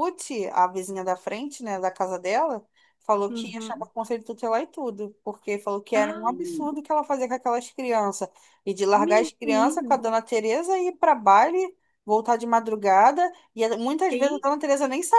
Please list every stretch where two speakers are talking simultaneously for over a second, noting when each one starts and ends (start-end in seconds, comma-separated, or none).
none